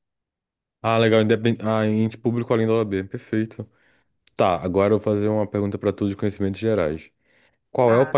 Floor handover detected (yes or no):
no